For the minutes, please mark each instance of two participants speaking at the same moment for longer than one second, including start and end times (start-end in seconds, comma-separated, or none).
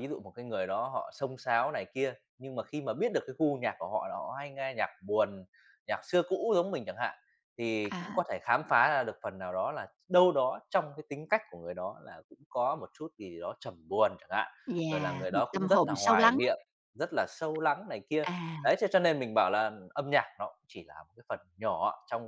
14.9-16.4